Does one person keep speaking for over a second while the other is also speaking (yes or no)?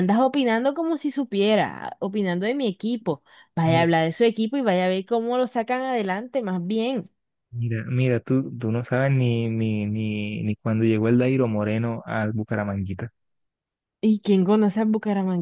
no